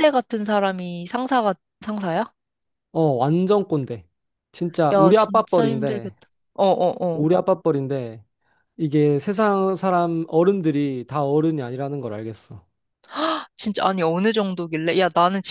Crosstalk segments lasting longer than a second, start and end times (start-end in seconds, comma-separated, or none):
4.9-6.1